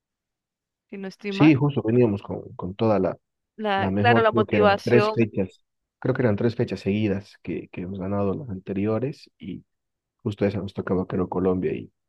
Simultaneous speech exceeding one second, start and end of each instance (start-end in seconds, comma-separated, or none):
3.8-5.3